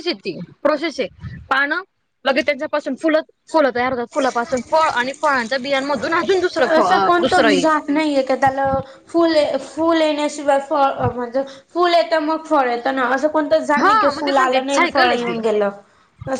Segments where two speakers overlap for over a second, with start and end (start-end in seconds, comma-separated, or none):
13.8-15.4